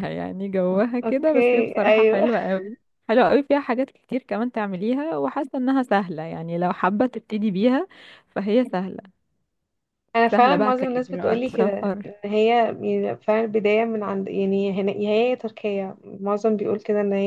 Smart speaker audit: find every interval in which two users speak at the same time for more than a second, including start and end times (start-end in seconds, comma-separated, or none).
1.0-2.3, 10.3-12.1